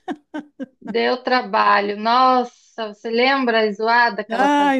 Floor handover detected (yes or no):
yes